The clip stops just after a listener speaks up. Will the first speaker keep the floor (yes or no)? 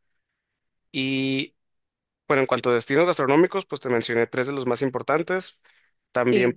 no